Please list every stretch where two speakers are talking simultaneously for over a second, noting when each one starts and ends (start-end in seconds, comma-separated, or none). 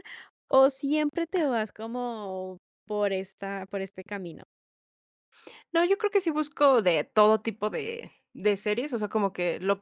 none